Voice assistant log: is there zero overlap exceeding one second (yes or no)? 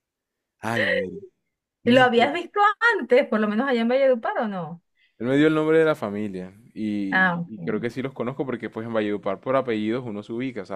yes